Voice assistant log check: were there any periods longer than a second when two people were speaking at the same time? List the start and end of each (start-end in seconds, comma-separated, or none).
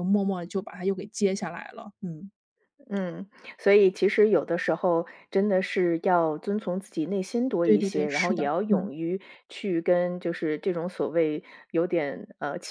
7.6-8.9